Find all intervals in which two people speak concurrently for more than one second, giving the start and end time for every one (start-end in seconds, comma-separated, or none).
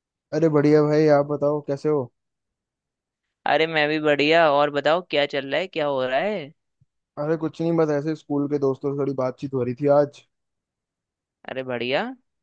none